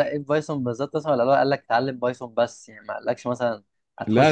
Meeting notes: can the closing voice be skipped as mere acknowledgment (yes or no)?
no